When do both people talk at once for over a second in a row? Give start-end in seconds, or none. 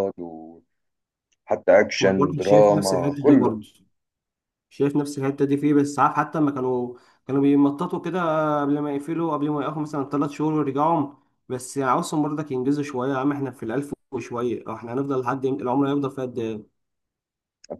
2.0-3.6